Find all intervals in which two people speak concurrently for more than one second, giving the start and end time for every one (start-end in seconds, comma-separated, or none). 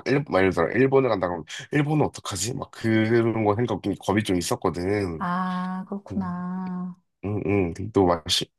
none